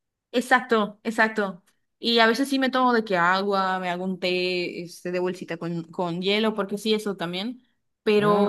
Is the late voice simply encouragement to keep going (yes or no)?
no